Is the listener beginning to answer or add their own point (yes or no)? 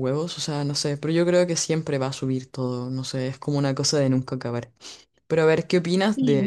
no